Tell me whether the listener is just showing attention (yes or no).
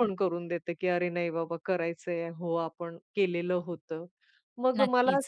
yes